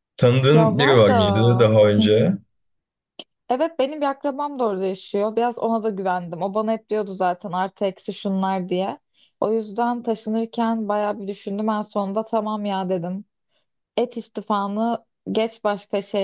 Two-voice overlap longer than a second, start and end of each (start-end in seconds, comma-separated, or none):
0.5-2.3